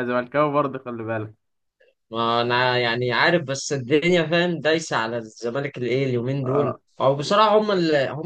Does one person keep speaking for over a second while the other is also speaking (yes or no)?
no